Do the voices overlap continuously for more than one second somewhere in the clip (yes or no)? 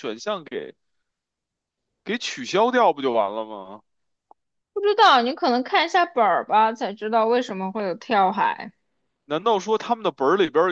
no